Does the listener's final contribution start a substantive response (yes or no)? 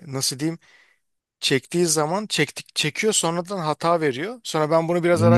yes